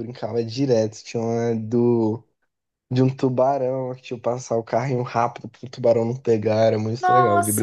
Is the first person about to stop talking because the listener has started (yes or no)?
yes